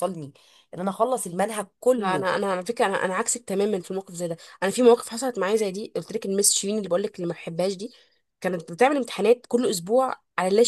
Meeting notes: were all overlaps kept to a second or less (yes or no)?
yes